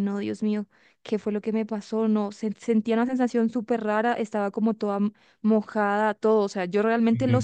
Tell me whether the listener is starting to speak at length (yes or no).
no